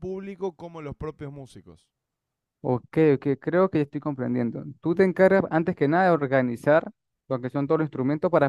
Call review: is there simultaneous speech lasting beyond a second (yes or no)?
no